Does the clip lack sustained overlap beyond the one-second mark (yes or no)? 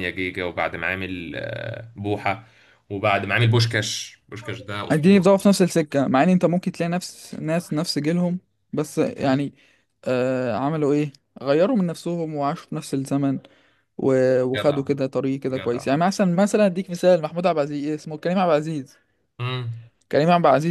yes